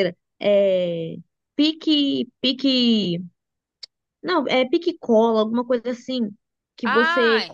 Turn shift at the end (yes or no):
no